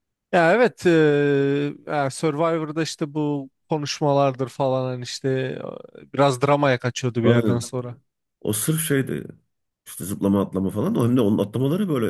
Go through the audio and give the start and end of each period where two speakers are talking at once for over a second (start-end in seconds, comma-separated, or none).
none